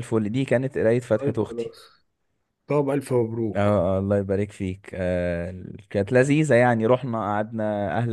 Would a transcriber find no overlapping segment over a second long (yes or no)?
yes